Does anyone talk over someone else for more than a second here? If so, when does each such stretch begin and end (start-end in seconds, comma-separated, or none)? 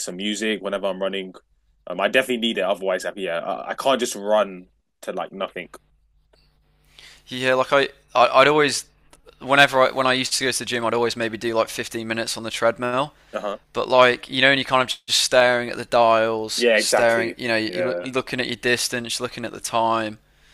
16.5-18.1